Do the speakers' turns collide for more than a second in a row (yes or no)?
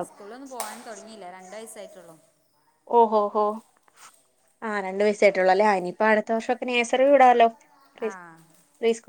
no